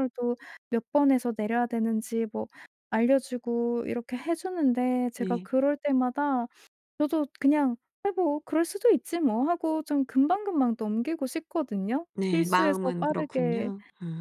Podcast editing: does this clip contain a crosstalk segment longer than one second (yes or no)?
yes